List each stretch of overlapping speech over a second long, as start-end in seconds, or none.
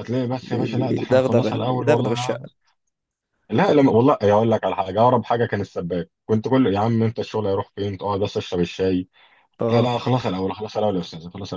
0.9-2.4